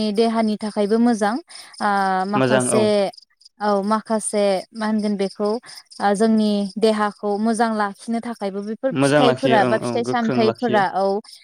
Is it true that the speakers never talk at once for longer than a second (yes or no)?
no